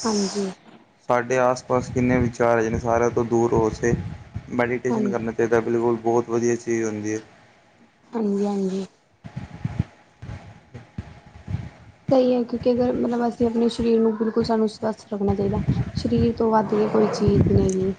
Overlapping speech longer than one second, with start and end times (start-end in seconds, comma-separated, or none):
none